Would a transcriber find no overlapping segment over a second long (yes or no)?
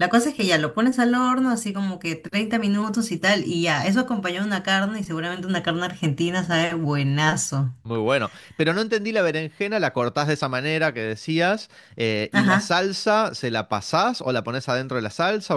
yes